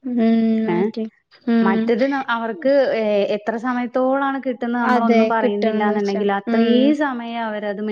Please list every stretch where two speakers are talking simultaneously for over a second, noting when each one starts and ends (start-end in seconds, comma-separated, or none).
4.9-6.7